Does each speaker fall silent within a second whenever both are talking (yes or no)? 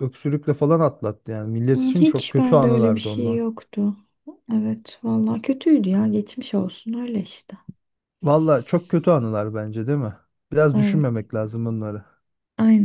no